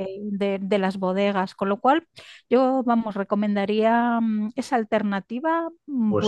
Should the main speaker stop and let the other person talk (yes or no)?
yes